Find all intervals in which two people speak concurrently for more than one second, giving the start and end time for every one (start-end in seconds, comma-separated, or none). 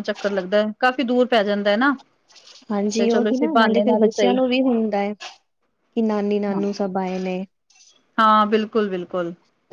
3.0-4.3